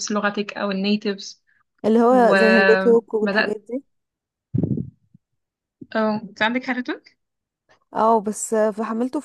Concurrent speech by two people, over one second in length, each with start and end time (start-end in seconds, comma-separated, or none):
2.1-3.6